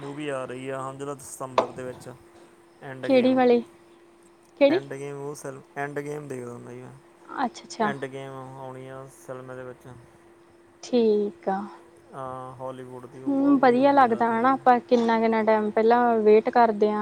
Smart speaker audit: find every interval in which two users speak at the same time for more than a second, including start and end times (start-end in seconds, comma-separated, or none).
none